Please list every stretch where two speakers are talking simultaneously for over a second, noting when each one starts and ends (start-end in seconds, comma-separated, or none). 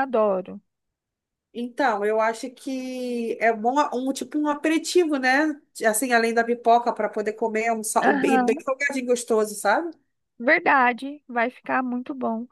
none